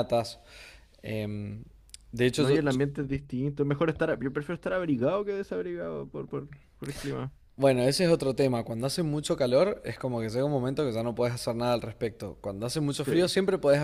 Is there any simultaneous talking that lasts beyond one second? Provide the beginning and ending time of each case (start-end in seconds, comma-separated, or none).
none